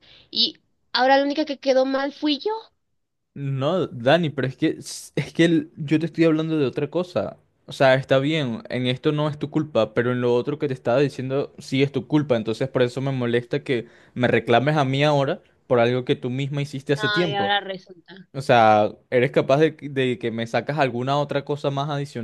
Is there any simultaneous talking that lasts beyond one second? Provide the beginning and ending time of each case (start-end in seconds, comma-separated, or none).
none